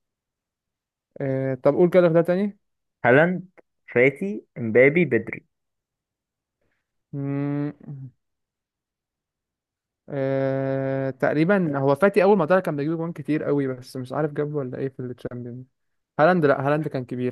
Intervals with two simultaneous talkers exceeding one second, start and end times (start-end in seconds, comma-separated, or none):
none